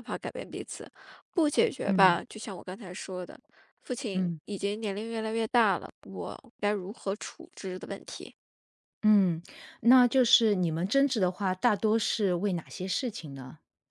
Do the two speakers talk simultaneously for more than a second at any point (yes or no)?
no